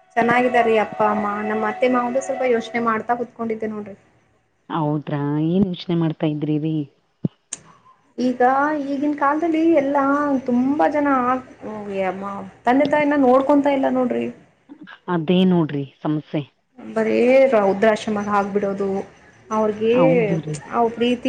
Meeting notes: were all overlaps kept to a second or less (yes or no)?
yes